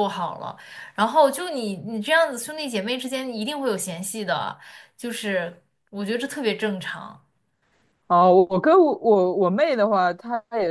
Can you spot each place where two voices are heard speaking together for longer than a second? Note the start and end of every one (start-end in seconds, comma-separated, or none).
none